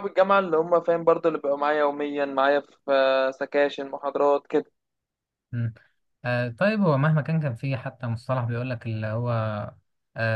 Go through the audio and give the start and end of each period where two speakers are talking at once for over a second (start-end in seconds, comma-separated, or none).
none